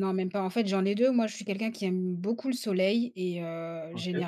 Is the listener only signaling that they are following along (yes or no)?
yes